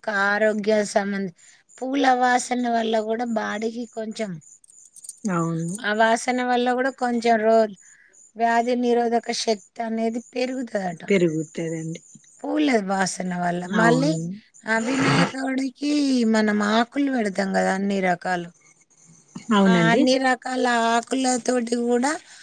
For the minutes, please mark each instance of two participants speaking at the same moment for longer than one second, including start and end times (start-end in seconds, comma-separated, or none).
none